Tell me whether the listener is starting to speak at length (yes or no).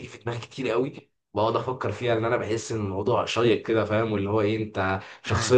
no